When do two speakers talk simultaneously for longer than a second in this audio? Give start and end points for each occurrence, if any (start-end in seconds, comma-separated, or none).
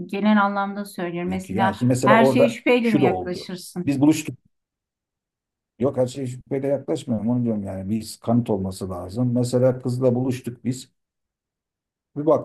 1.3-4.0